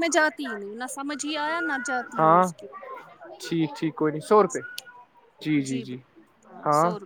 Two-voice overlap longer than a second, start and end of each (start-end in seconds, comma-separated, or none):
none